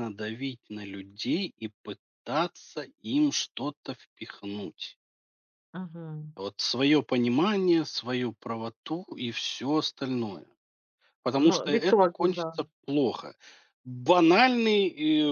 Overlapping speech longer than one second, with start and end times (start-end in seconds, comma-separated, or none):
11.3-12.6